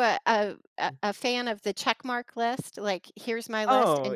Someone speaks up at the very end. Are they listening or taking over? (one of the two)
taking over